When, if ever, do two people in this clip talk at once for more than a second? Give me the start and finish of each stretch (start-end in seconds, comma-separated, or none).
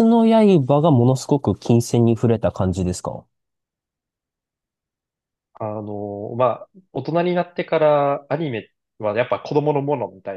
none